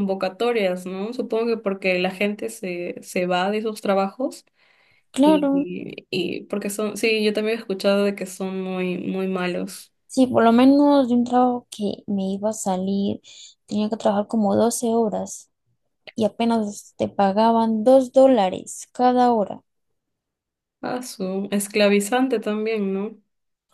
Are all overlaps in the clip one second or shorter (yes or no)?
yes